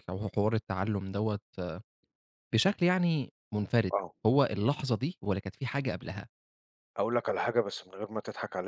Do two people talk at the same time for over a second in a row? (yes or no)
no